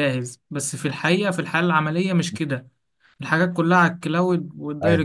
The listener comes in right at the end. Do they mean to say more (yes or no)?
no